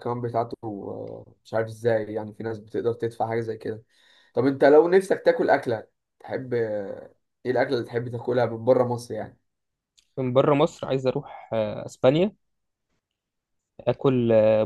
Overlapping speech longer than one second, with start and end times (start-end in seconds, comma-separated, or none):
none